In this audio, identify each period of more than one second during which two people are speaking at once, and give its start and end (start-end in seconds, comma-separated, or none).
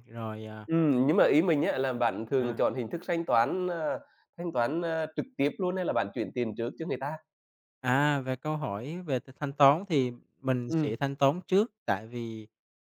none